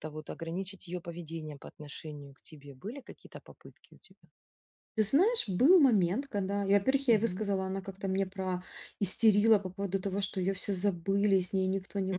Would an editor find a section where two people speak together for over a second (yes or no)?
no